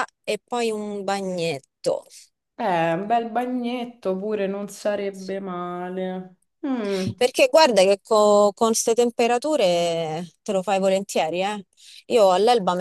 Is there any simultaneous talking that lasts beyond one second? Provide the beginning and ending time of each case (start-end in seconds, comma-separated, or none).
none